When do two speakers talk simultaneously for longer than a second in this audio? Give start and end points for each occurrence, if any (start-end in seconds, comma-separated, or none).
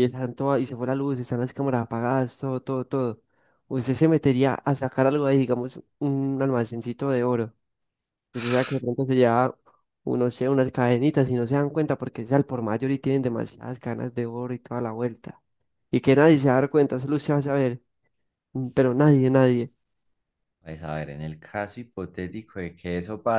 none